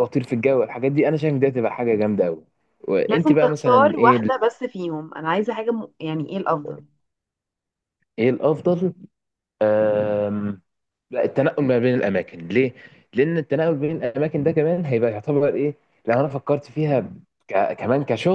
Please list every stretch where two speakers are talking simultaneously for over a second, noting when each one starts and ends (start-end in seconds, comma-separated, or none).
3.1-4.5